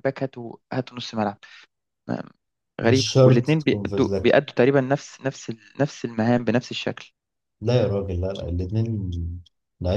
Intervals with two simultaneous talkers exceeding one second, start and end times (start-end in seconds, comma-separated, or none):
2.8-4.3